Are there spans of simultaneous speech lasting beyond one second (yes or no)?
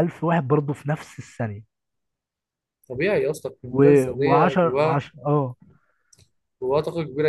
yes